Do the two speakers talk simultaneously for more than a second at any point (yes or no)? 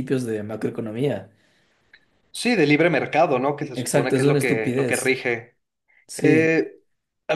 yes